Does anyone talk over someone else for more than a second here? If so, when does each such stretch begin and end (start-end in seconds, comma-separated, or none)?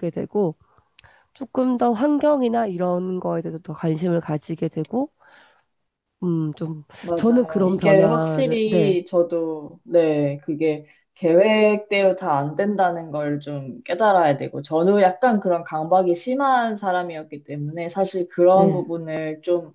7.0-9.0